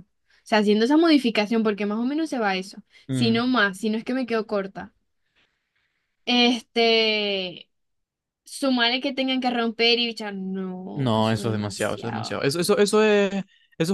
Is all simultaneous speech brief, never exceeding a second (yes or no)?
no